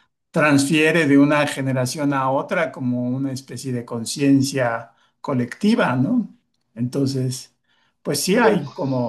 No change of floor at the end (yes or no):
yes